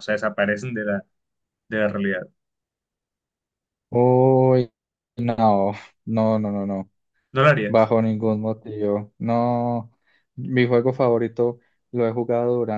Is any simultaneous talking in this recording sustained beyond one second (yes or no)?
no